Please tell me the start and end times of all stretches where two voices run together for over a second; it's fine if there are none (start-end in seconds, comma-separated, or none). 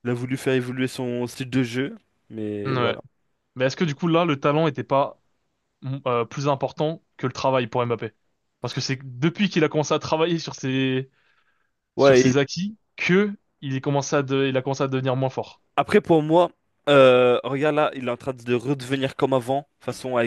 none